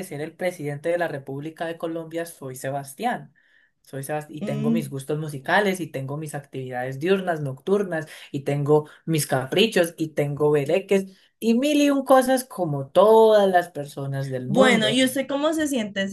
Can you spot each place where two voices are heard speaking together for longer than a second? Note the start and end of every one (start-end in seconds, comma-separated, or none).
none